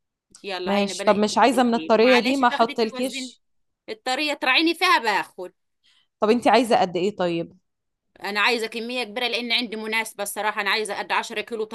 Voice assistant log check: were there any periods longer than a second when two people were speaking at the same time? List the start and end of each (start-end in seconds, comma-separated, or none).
0.7-3.3